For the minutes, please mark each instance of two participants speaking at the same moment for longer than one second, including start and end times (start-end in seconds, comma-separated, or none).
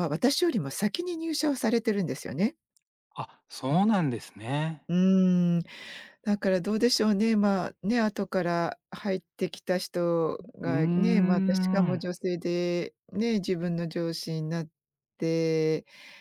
10.6-12.0